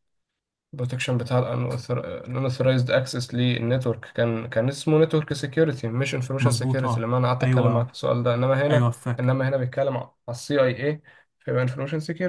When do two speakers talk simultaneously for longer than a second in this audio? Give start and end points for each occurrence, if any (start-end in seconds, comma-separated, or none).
6.4-7.9